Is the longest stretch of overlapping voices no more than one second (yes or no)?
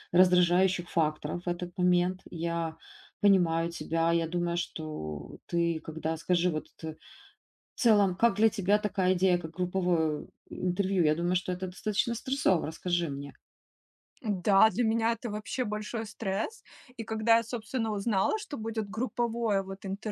yes